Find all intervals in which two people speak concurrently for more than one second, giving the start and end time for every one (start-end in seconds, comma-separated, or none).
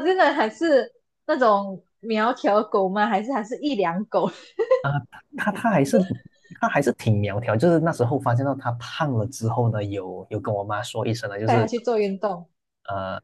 none